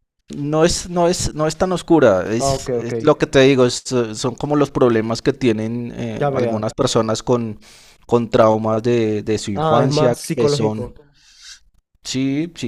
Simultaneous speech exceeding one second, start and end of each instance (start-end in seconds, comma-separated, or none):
9.5-10.9